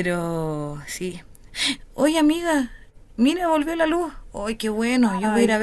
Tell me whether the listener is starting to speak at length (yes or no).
yes